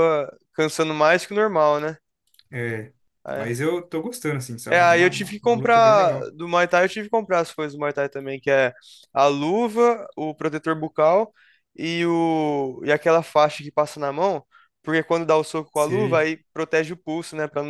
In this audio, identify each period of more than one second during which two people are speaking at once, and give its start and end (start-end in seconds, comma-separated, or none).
4.7-6.3